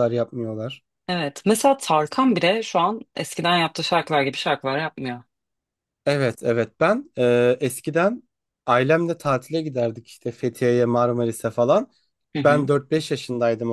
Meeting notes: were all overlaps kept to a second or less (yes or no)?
yes